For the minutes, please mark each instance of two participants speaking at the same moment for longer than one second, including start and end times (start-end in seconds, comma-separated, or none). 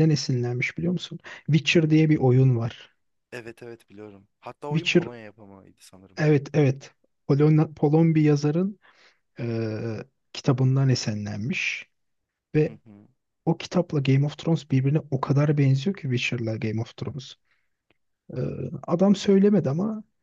none